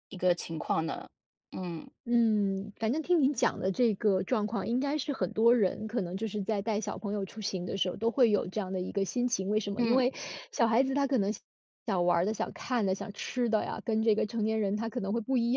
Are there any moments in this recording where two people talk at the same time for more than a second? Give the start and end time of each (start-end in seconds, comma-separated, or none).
none